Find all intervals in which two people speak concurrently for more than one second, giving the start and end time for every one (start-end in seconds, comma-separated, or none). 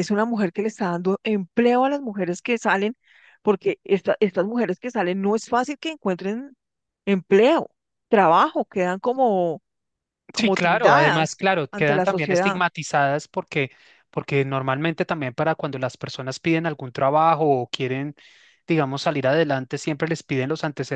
10.3-12.6